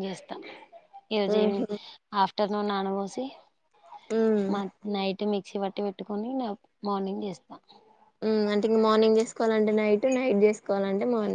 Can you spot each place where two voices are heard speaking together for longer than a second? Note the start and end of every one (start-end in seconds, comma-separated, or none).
none